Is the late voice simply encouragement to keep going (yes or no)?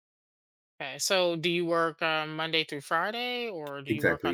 no